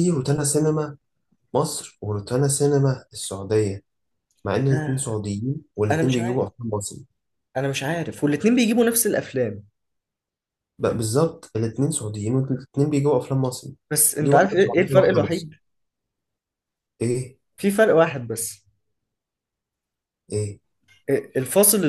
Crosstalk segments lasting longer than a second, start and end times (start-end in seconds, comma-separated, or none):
14.2-15.5